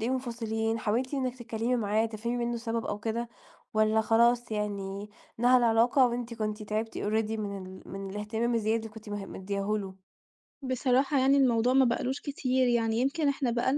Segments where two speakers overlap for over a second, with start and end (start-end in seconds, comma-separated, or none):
none